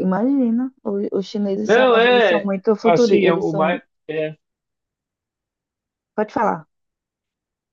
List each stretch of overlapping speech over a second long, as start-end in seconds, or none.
1.6-3.8